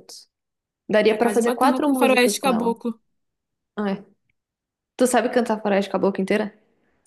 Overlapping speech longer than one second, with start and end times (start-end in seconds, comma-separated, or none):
1.1-2.8